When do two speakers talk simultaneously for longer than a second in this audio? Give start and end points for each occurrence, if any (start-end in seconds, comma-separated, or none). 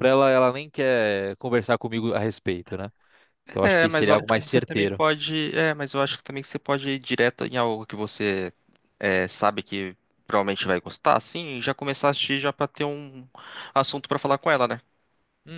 3.6-5.0